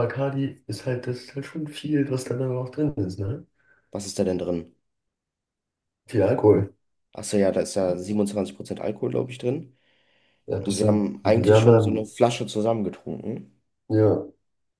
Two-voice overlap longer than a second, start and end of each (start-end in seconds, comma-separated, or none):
10.6-12.1